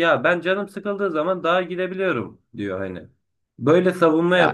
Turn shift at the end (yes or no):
no